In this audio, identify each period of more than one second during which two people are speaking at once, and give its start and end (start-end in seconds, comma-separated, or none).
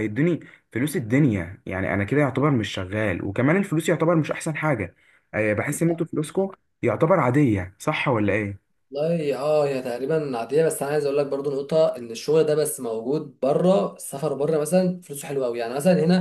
none